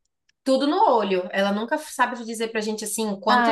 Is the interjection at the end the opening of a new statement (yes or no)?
yes